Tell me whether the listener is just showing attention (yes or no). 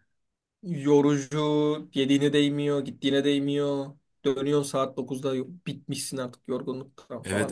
no